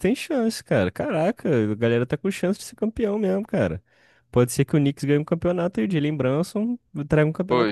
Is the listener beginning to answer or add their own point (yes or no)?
yes